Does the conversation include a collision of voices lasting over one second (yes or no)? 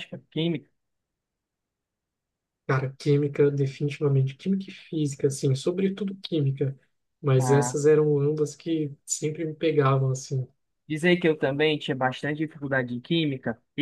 no